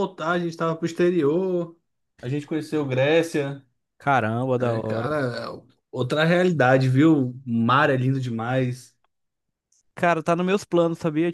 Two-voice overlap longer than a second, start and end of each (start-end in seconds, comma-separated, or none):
none